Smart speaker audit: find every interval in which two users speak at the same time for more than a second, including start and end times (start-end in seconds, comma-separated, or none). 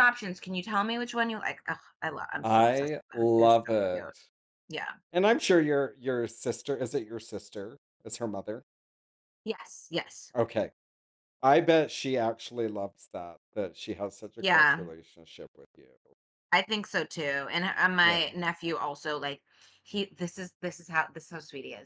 2.4-4.0